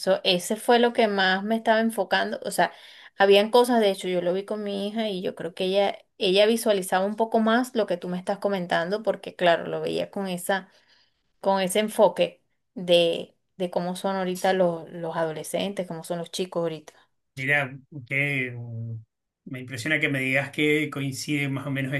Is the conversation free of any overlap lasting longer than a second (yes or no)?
yes